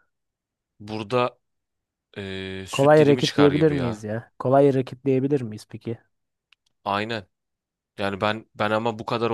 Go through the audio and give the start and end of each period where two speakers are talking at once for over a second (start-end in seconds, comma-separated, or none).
2.7-4.0